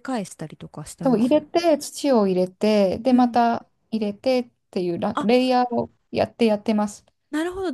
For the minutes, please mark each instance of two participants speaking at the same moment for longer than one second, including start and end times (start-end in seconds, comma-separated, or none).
none